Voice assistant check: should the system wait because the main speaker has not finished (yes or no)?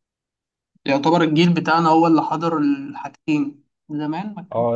no